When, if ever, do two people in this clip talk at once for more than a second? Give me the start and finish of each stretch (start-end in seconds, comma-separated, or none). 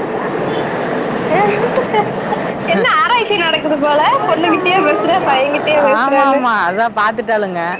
none